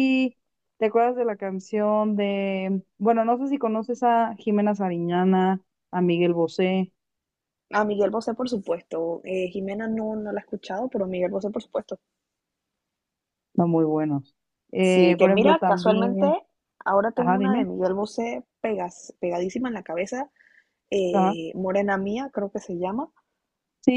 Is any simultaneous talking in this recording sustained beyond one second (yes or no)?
yes